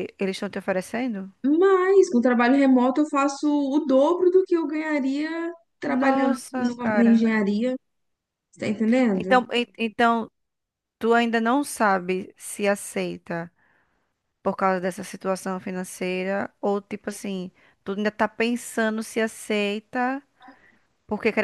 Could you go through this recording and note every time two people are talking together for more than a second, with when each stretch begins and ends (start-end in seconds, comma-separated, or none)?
5.8-7.2